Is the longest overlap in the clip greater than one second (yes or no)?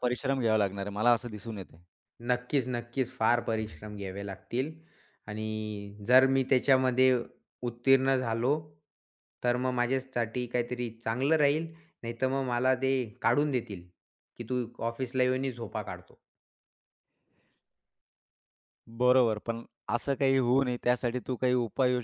no